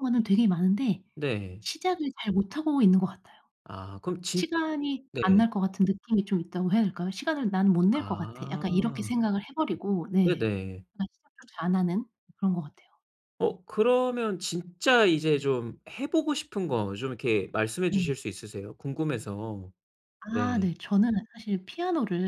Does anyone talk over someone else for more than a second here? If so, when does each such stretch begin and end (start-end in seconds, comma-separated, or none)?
7.9-9.1